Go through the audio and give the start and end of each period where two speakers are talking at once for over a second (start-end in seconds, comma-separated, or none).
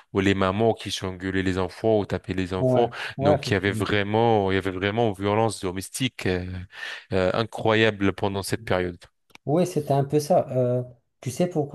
2.6-4.0